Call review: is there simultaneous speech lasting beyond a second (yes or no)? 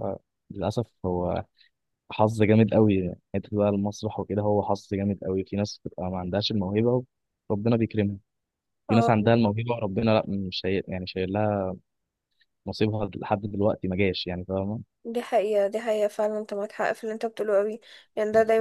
no